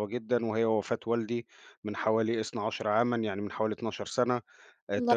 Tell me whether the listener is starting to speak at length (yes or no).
no